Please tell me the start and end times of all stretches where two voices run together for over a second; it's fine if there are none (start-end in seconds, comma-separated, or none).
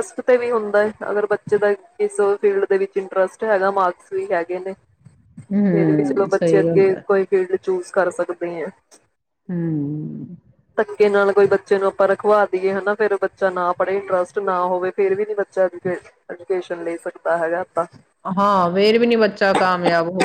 5.5-7.0